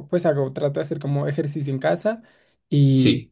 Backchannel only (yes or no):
yes